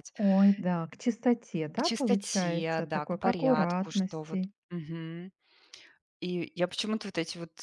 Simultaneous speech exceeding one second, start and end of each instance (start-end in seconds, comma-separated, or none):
1.7-4.5